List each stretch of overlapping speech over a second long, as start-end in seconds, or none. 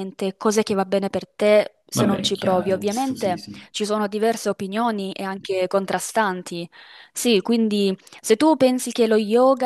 1.9-3.7